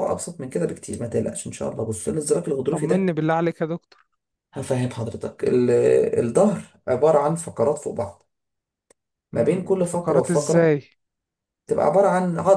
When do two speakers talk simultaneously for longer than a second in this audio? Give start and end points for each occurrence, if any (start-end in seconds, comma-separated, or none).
9.3-10.8